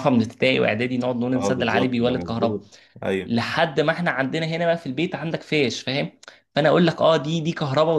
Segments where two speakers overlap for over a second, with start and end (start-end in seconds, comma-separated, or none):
1.4-2.6